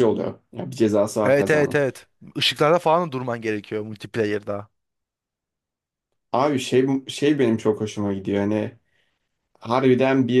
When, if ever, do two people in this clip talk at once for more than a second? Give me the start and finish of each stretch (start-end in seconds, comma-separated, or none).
none